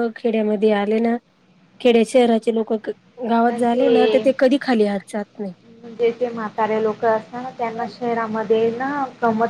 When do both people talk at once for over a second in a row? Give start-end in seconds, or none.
none